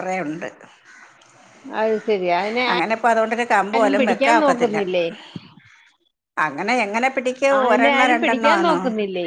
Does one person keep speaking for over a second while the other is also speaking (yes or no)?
no